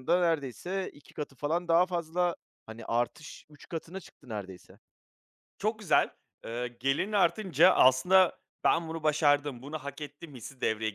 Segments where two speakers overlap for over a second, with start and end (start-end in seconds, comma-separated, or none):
none